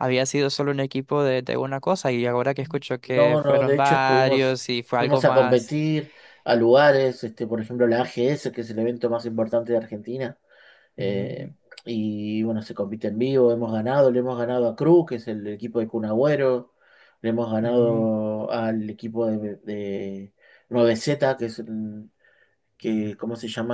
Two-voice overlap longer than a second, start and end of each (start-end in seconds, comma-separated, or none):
3.0-5.7